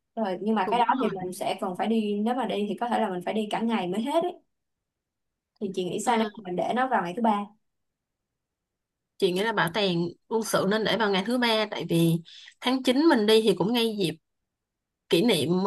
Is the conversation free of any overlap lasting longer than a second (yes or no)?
yes